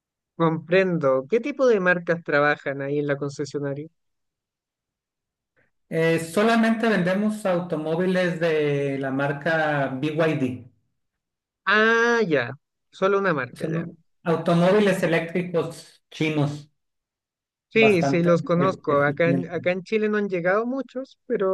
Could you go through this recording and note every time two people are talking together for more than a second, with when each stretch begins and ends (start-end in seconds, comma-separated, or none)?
17.7-19.7